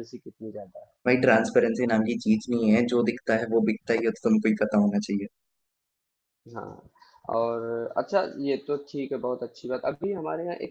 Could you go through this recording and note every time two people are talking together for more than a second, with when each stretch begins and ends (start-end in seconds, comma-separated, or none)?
none